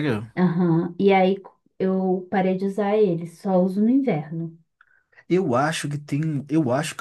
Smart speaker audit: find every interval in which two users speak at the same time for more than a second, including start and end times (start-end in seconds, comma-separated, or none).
none